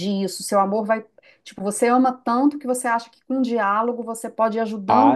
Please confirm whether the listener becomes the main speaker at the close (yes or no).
yes